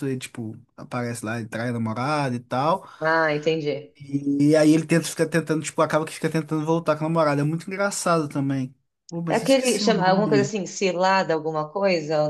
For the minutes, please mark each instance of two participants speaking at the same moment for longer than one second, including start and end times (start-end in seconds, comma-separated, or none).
9.3-10.5